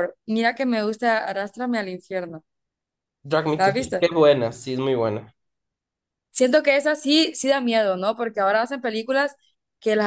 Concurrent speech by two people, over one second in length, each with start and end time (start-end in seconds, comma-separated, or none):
none